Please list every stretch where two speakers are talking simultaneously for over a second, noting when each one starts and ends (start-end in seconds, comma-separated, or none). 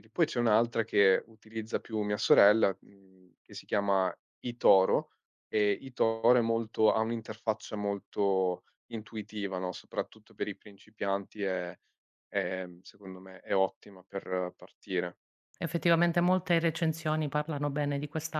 none